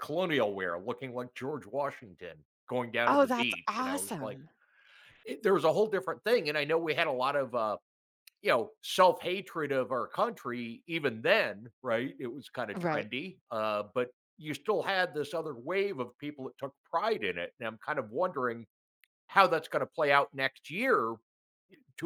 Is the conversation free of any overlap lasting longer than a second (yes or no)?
no